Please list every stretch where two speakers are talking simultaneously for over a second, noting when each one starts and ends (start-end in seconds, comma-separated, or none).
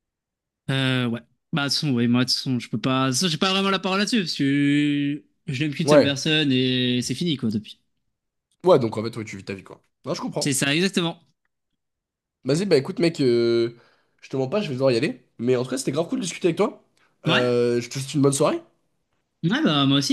none